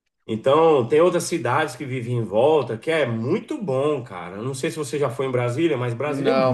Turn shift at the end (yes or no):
yes